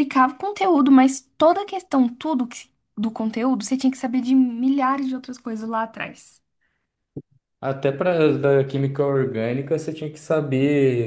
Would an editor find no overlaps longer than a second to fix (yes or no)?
yes